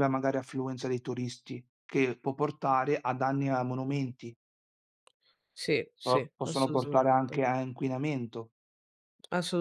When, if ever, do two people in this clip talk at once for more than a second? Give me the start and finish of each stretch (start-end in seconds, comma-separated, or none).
6.0-7.4